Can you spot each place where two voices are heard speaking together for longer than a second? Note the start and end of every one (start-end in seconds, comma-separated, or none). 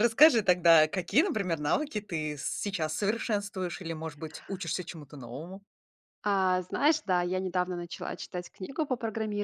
none